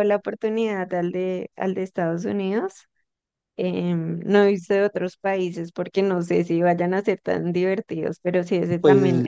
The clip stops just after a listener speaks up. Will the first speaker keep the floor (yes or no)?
no